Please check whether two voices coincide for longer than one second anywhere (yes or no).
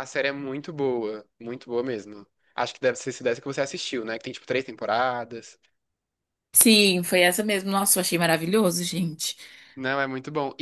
no